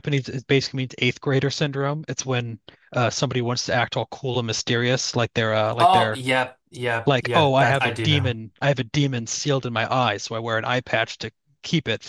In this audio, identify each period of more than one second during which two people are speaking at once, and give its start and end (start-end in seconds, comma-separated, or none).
7.0-8.4